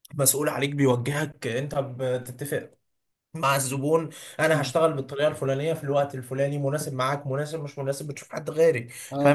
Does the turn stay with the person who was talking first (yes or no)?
no